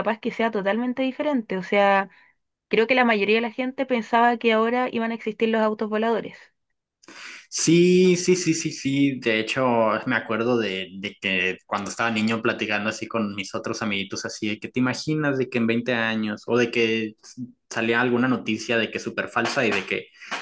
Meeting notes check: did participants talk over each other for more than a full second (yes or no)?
no